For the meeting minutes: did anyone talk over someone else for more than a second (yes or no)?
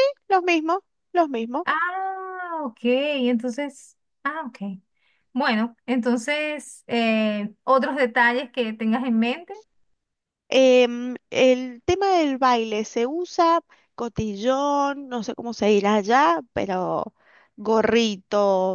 no